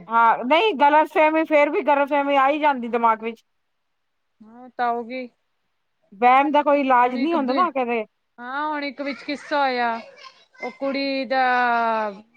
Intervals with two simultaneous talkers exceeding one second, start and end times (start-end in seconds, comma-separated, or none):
none